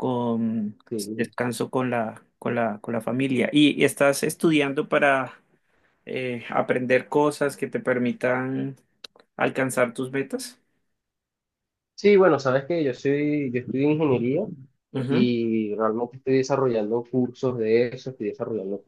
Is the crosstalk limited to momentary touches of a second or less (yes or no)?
yes